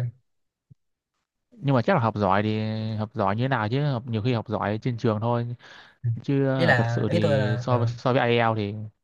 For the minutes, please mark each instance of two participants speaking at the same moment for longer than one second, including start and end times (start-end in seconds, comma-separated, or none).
6.6-7.9